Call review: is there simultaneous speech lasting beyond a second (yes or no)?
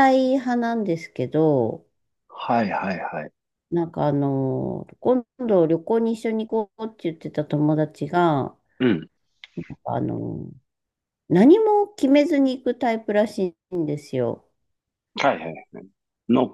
no